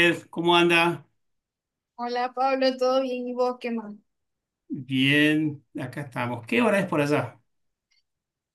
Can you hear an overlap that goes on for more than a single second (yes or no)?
no